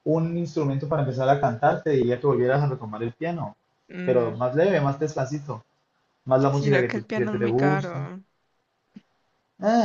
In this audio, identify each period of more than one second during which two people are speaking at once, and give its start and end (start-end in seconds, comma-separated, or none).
6.5-8.1